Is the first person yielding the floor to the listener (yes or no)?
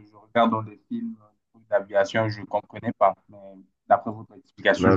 yes